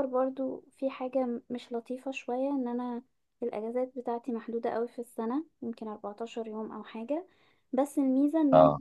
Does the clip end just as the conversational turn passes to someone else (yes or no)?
no